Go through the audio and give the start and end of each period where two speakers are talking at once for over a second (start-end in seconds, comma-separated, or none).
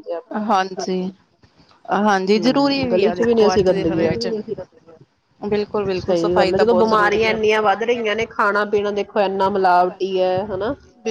2.2-4.3, 6.0-7.4